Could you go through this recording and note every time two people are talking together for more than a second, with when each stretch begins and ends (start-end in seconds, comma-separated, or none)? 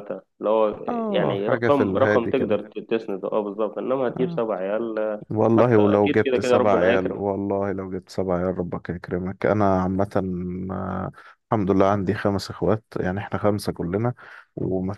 0.9-2.6, 5.3-7.2